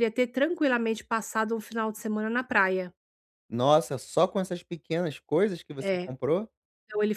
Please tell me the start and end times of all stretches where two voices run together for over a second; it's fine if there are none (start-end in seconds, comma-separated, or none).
none